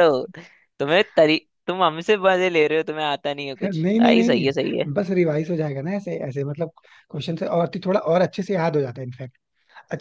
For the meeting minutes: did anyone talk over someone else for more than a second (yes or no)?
yes